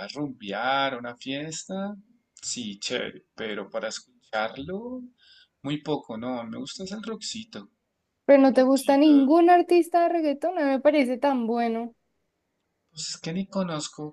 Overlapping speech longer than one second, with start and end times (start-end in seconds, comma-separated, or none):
none